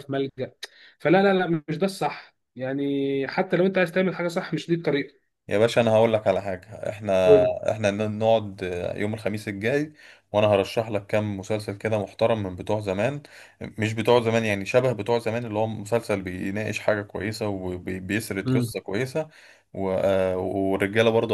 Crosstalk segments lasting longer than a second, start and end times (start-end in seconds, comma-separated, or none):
none